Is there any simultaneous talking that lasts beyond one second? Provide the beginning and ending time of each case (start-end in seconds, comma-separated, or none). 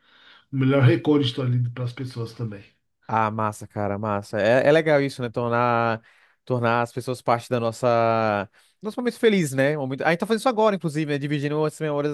none